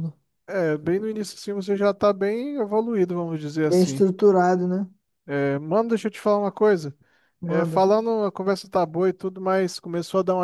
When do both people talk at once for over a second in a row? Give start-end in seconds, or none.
none